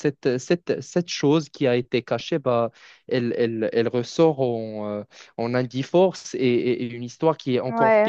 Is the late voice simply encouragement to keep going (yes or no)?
no